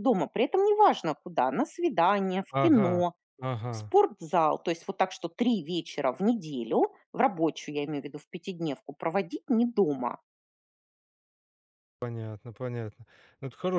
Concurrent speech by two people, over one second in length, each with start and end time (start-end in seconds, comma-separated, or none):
none